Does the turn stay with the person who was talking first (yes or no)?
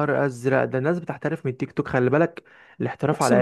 yes